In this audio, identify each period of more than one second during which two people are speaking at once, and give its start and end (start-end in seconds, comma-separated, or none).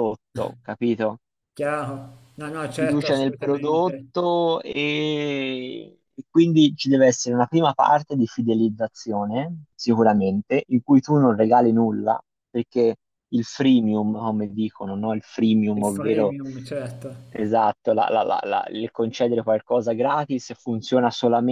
2.4-4.1